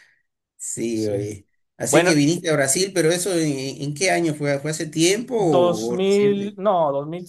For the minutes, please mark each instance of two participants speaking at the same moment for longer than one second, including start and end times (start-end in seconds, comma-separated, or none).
5.3-6.6